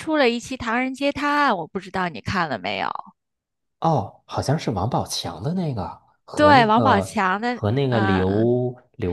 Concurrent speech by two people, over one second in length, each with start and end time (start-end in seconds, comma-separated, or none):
6.3-8.4